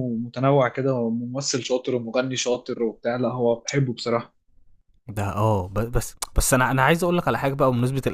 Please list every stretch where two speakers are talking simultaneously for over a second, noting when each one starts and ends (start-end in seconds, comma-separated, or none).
none